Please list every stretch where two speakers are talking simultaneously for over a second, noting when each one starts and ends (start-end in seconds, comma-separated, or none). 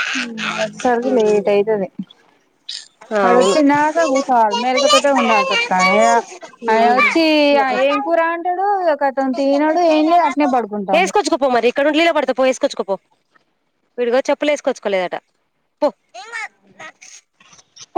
none